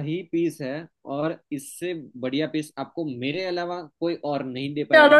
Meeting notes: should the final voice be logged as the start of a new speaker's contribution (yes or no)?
yes